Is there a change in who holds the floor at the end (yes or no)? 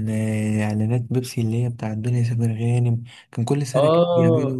yes